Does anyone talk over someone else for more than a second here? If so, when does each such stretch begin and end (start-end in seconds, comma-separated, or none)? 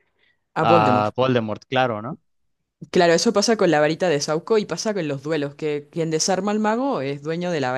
none